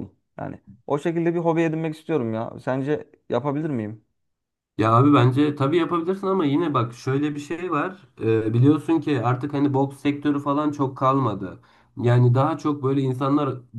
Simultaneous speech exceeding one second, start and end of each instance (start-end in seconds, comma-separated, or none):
none